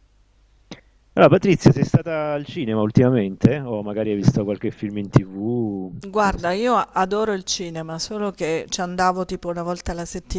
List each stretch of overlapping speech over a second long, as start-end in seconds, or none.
none